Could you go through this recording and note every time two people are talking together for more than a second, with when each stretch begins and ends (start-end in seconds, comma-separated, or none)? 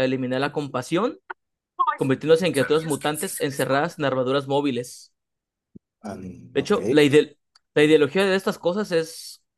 2.5-4.0